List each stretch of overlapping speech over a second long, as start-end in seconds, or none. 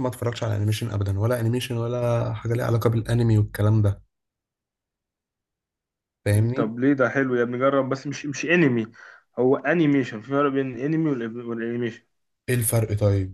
none